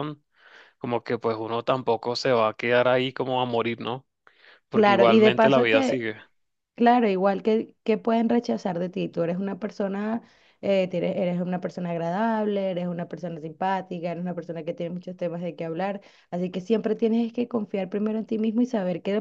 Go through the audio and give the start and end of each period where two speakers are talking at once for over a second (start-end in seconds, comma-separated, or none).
4.7-6.0